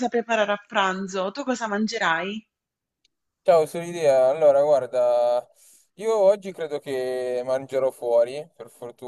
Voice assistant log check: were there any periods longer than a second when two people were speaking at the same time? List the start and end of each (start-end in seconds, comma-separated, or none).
none